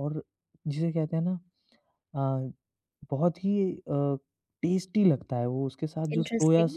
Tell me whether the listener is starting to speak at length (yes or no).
no